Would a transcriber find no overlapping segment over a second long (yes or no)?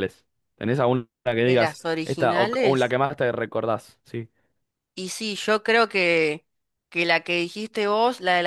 no